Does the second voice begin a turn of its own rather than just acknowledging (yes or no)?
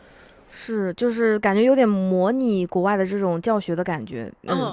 yes